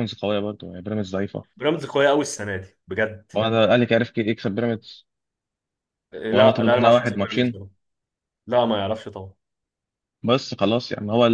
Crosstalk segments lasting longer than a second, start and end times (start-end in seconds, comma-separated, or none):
6.3-7.6